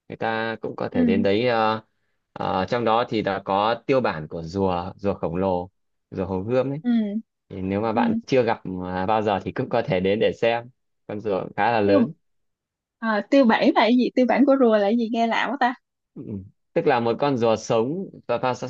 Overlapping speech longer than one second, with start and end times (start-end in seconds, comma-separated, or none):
none